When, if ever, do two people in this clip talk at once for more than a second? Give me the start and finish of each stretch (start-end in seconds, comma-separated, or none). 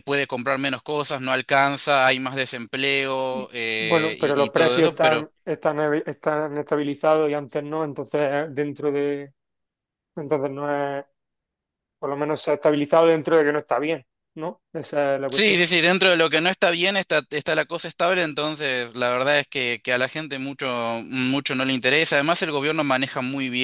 3.3-5.0